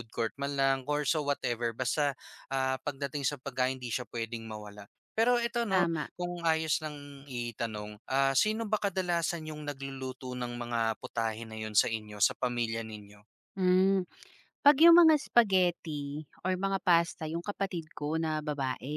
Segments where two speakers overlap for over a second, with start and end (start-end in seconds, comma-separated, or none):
none